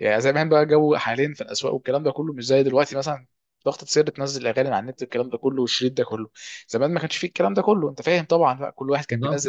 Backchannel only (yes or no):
no